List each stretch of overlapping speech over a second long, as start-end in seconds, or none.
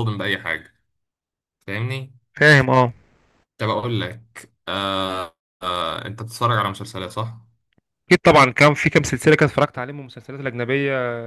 none